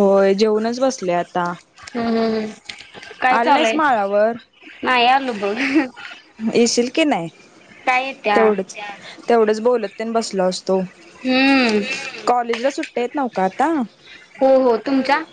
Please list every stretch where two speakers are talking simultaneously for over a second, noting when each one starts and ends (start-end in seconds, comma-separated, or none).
none